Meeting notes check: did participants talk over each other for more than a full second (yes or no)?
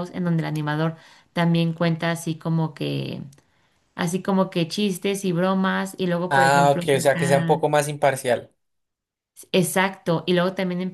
yes